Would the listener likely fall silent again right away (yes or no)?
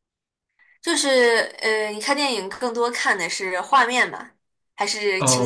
no